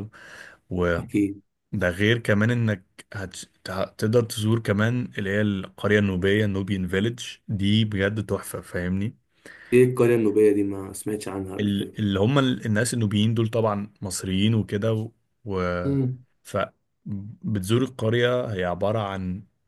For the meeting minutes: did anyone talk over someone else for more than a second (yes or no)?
no